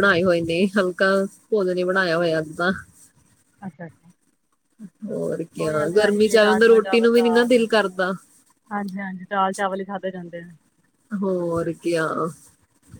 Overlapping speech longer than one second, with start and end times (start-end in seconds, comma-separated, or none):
5.6-7.6